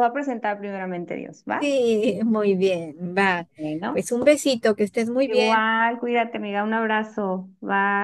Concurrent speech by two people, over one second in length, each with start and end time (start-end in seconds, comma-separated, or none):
none